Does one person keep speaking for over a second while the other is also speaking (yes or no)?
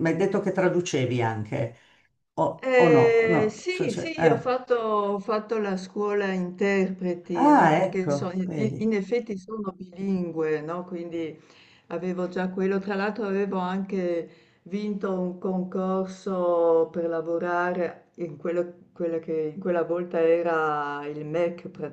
yes